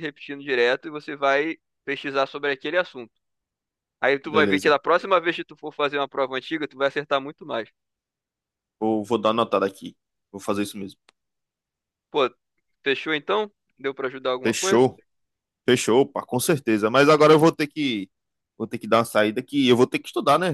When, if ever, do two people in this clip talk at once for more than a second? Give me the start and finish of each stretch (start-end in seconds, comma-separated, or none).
none